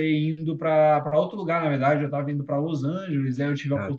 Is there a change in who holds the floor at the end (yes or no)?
no